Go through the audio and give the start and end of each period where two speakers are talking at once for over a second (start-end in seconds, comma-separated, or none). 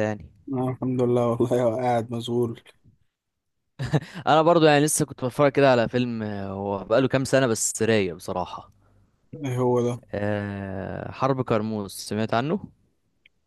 none